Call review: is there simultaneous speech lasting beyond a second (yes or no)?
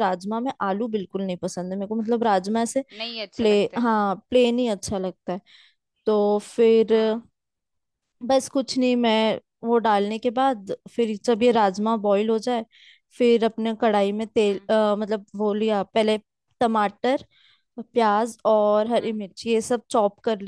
no